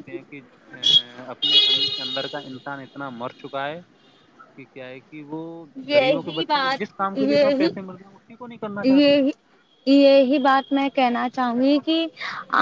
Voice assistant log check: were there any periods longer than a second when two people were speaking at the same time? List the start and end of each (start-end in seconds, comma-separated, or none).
5.9-7.7